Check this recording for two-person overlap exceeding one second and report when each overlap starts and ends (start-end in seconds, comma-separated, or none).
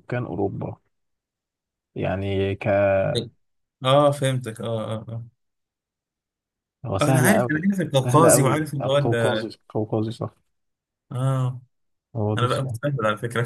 7.0-9.5